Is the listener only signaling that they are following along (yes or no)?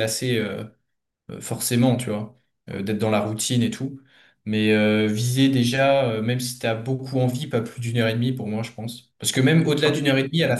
yes